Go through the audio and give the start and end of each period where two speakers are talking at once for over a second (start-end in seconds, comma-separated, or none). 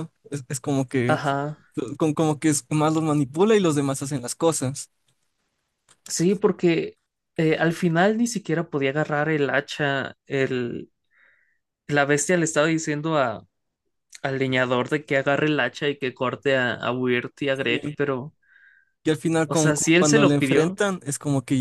19.5-20.8